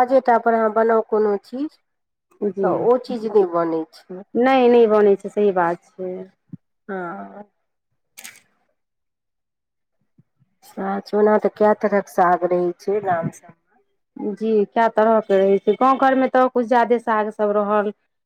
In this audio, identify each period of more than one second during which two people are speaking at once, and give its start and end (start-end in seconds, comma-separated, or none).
none